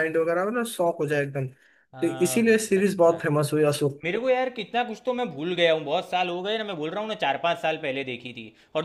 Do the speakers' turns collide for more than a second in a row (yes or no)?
yes